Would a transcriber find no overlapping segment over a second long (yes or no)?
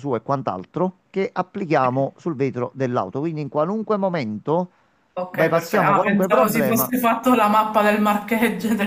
no